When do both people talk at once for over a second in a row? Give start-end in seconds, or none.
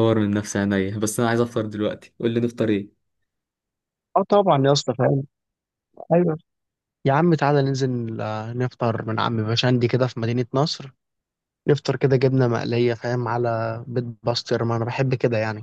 none